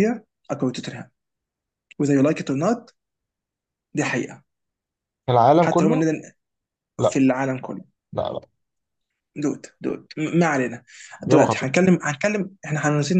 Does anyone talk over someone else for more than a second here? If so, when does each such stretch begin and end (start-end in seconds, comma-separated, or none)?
none